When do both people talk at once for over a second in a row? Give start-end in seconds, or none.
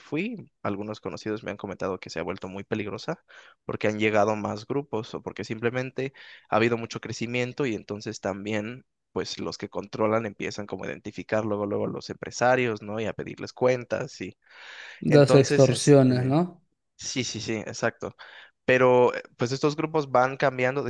15.1-16.4